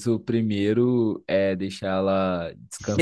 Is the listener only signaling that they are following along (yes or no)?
no